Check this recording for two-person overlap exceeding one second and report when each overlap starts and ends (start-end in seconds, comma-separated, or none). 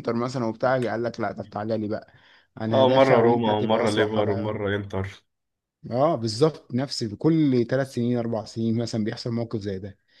2.8-4.5